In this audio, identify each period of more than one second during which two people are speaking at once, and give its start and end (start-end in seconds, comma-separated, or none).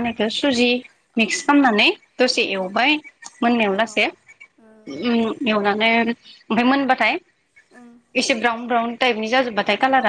3.9-5.1